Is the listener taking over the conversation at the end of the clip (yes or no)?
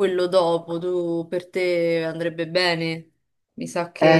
yes